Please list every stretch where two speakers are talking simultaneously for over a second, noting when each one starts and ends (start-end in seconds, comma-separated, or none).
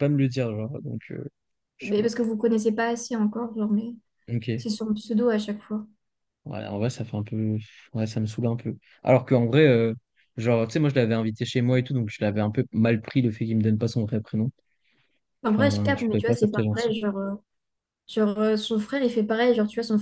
15.5-16.9